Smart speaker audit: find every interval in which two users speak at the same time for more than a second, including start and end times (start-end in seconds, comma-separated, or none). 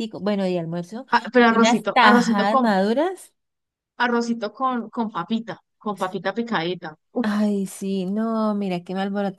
1.1-2.6